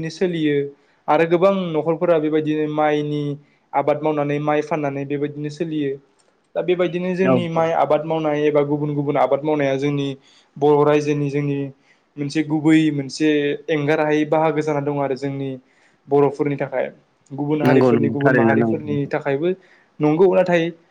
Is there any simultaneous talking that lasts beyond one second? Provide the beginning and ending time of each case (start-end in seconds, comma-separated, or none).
17.7-19.1